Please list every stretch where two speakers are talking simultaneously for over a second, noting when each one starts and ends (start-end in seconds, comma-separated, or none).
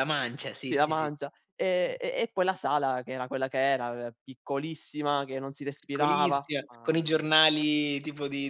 5.8-7.3